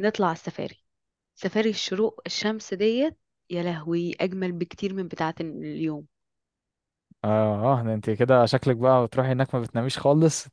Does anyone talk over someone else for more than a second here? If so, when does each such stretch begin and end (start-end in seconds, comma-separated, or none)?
none